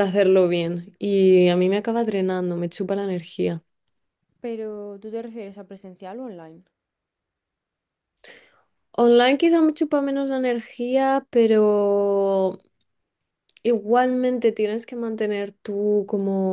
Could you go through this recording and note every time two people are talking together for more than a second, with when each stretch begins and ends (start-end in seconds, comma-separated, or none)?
none